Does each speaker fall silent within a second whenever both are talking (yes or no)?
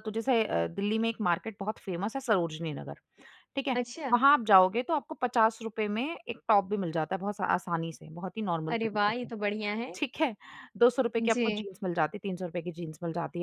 yes